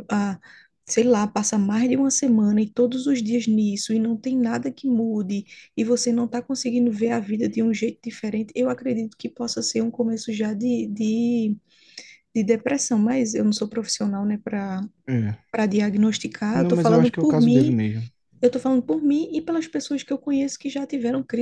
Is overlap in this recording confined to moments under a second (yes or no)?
no